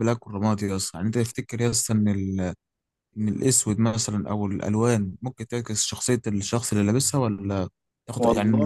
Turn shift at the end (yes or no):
no